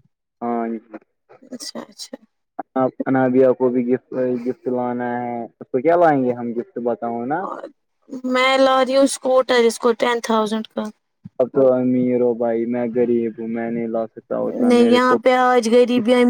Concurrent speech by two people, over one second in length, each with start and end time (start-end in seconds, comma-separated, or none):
none